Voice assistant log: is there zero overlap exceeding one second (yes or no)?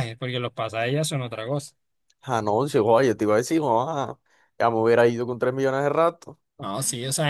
yes